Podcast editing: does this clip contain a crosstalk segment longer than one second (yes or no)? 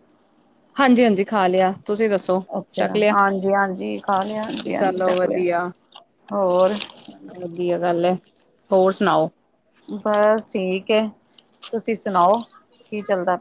no